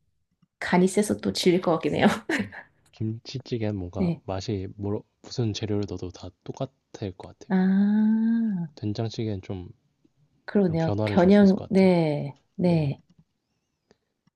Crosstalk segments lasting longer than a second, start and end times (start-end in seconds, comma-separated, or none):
10.7-11.9